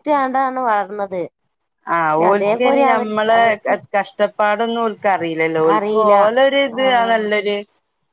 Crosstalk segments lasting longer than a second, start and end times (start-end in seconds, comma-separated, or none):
none